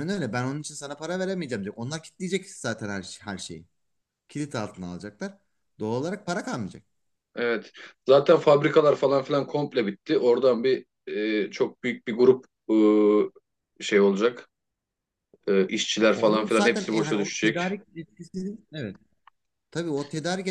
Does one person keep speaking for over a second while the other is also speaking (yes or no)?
yes